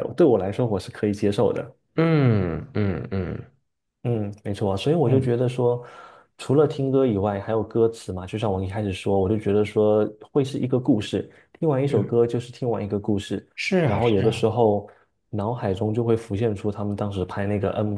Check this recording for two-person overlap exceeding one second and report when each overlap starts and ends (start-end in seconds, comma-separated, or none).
none